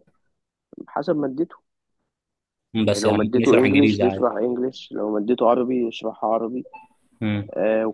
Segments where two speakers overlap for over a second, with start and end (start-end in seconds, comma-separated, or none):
2.8-4.3